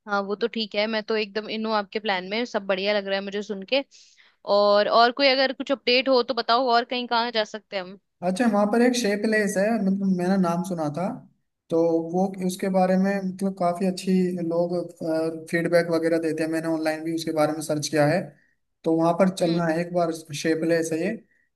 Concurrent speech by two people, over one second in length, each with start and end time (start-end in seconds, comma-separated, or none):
none